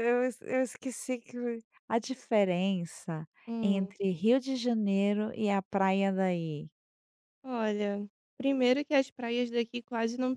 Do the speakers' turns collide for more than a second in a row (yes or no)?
no